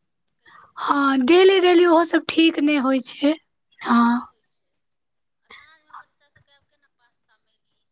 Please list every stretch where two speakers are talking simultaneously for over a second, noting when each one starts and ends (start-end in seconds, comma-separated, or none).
0.8-2.7